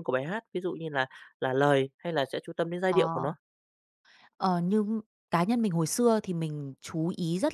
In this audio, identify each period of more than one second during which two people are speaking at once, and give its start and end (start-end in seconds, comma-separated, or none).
none